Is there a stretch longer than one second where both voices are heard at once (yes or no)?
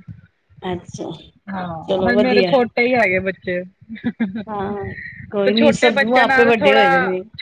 yes